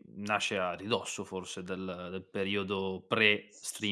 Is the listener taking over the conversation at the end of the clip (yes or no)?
yes